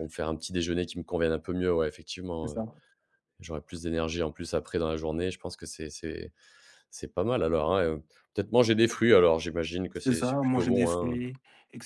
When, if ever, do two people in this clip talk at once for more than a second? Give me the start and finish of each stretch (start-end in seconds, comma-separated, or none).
9.9-11.2